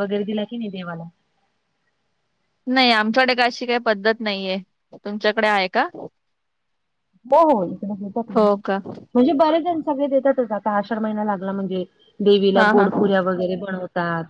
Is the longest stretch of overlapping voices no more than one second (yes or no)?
yes